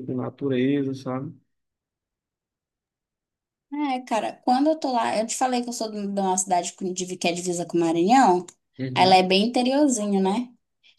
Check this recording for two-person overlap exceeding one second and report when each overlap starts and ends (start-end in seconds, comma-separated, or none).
none